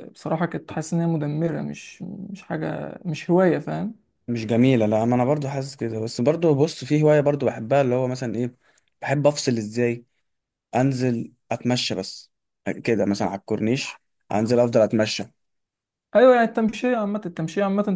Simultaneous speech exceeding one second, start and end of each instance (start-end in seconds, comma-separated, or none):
none